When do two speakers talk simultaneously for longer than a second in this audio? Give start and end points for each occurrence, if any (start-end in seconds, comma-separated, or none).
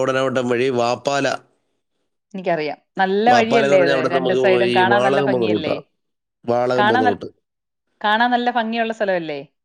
3.3-5.7